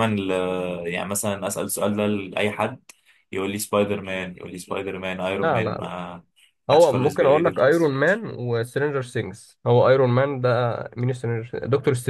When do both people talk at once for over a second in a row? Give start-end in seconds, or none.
6.7-8.1